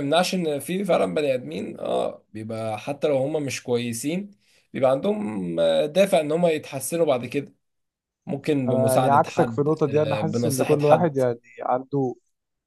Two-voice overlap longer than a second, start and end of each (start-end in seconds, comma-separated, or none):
8.7-11.2